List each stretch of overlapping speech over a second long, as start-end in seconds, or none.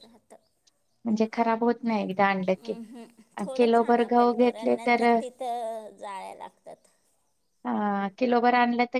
3.6-5.1